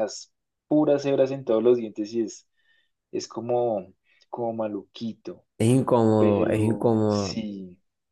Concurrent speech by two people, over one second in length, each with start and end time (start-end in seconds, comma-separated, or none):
6.2-7.4